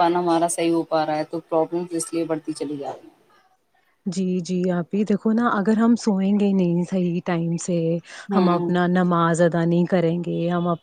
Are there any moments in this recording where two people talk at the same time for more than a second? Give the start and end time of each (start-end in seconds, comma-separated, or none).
none